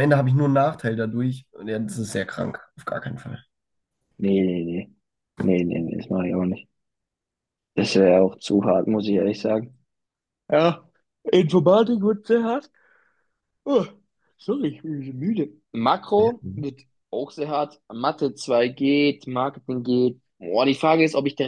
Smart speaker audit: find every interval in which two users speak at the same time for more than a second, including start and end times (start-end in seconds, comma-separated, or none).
none